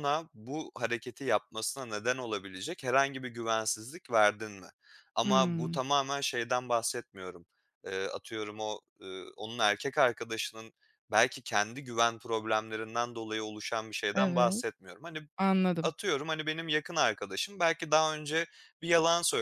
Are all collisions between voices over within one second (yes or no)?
yes